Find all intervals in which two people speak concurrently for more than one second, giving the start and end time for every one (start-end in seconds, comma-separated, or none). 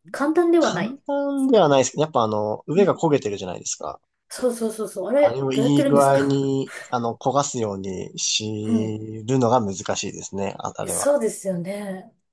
5.2-6.4